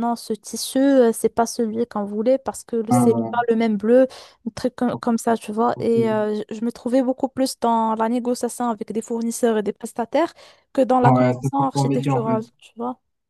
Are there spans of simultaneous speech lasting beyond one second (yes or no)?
yes